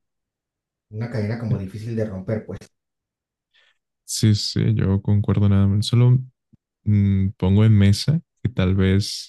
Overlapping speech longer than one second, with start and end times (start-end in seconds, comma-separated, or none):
none